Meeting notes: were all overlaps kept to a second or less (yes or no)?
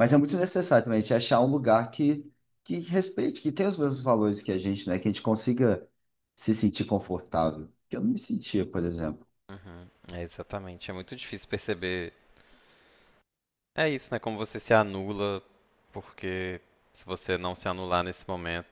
yes